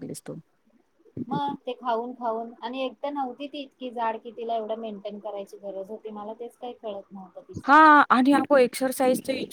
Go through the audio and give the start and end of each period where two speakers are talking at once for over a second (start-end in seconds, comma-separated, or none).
none